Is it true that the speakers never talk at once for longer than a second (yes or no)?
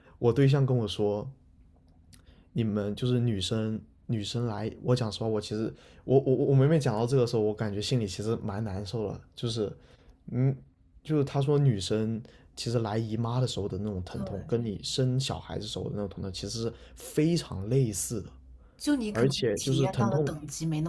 no